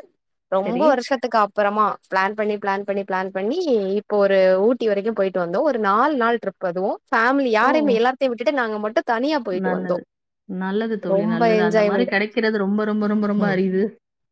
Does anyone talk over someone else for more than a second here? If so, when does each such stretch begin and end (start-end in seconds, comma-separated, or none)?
none